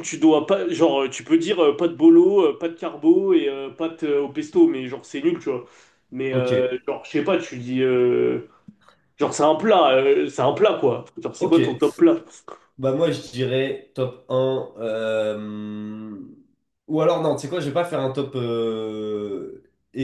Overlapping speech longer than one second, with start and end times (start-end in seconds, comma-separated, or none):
none